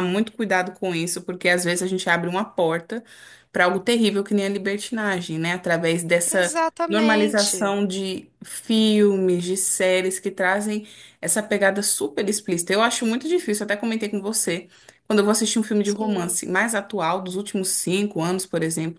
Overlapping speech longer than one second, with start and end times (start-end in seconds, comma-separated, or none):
6.3-7.8